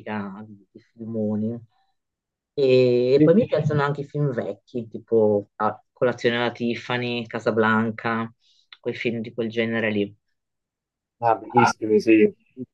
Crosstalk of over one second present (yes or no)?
no